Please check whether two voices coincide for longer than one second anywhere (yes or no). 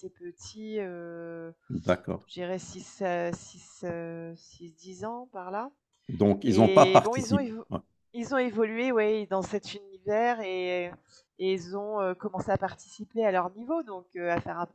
yes